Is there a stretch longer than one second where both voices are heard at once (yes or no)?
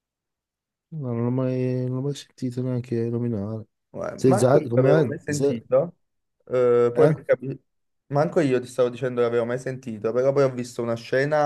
yes